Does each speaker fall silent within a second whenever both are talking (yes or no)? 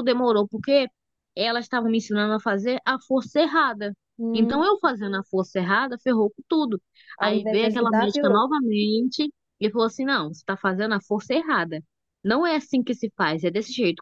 no